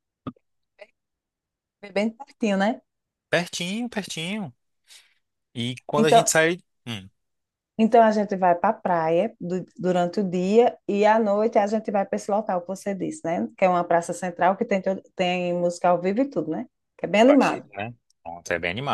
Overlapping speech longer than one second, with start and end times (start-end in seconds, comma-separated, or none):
none